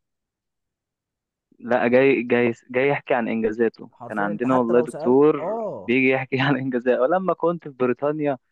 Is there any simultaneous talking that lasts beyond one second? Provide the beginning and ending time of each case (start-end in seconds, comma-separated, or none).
3.9-5.9